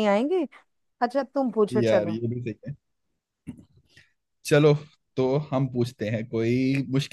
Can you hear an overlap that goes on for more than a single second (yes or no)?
no